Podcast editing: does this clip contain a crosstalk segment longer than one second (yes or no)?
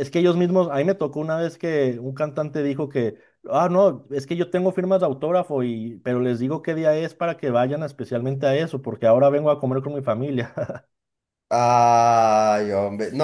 no